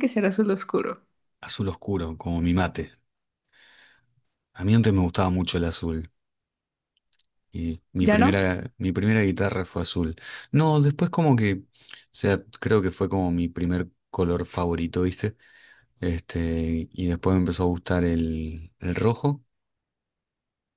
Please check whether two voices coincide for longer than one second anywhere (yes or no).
no